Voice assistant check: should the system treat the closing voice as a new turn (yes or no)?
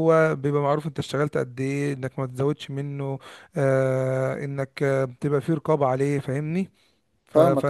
no